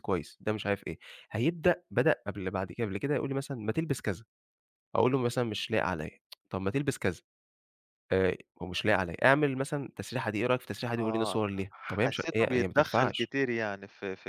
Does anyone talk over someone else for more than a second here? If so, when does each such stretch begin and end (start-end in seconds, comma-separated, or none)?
12.0-13.3